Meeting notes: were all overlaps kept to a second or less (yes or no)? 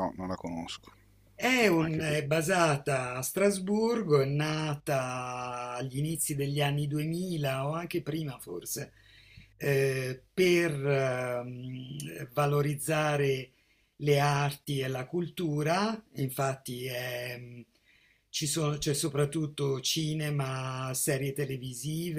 yes